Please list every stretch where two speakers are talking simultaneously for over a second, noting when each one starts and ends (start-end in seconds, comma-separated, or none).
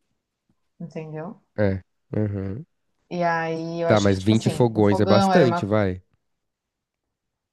3.9-5.7